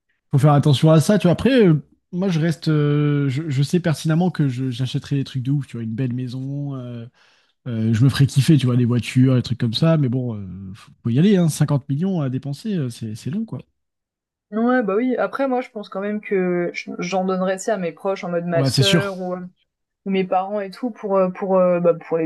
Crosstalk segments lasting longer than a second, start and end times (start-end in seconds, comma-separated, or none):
none